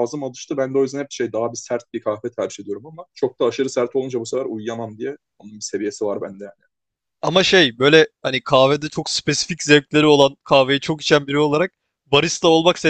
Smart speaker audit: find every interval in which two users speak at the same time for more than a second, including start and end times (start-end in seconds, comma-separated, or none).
none